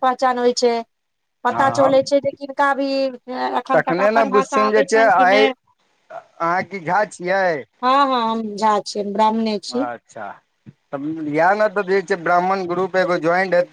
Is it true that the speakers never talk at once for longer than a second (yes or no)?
no